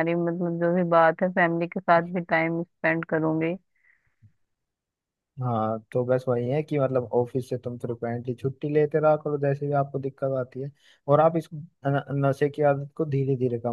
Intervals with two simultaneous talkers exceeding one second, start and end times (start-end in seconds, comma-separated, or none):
none